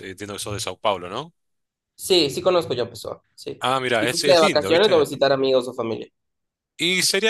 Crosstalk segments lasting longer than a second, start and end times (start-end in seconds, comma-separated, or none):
3.6-5.0